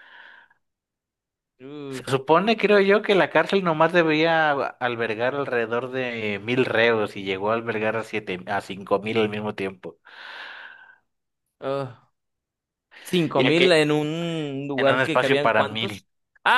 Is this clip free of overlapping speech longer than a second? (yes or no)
no